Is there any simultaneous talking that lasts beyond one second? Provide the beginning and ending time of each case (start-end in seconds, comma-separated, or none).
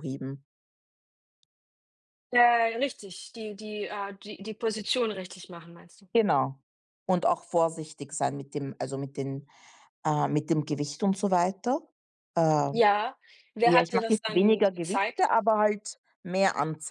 13.6-15.2